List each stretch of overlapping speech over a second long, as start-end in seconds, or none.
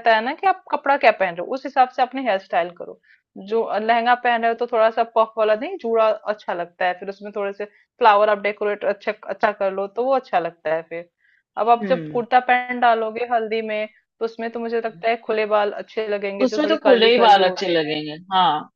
16.4-18.0